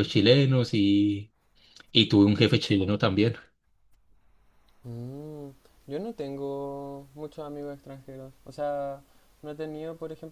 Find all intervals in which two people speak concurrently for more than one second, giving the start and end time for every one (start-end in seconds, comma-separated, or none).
none